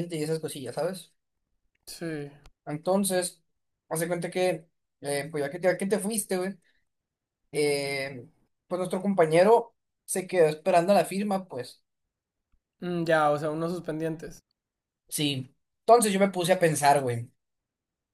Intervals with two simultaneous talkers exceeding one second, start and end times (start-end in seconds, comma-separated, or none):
none